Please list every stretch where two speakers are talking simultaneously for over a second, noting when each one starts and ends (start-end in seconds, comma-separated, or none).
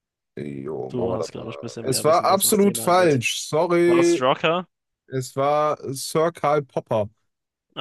0.9-3.2